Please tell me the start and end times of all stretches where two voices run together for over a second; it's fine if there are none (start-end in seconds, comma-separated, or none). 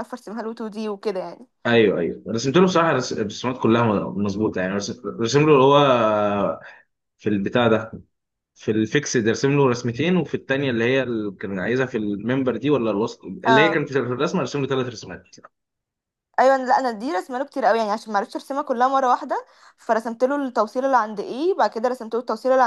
none